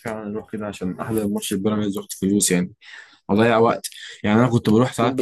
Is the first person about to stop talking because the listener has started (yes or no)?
no